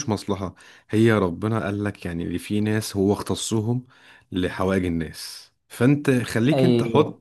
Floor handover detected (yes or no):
no